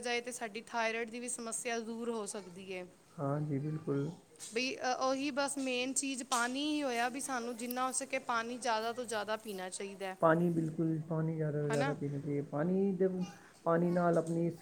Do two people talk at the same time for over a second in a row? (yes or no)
no